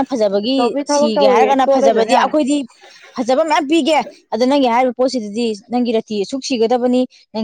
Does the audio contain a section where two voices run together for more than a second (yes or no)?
yes